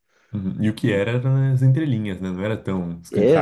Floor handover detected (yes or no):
yes